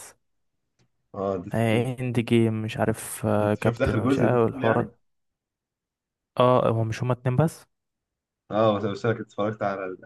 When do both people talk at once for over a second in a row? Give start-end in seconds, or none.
3.4-4.9